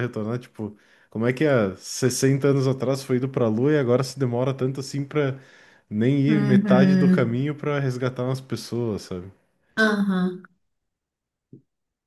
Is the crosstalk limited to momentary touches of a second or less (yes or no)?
no